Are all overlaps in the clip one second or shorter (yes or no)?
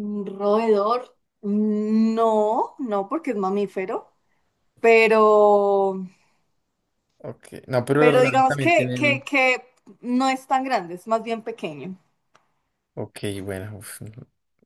no